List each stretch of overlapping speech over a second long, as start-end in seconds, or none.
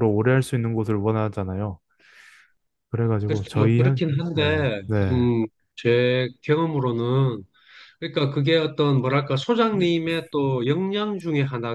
3.2-5.3